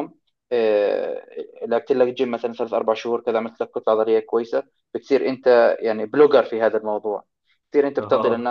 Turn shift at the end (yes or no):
no